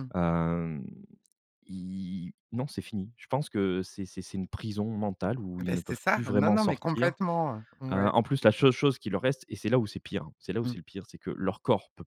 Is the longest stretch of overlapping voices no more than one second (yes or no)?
no